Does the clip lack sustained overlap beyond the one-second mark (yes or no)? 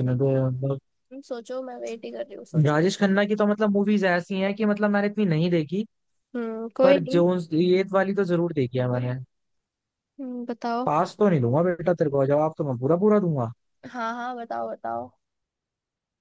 yes